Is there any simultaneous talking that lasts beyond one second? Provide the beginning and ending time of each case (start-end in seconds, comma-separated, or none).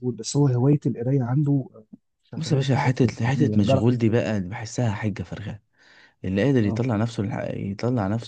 2.4-4.2